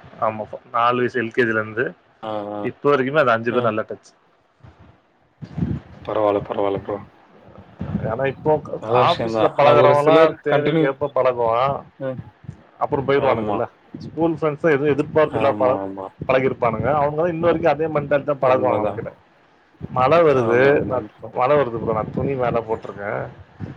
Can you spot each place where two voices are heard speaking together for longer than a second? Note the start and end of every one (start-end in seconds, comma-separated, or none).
9.1-10.8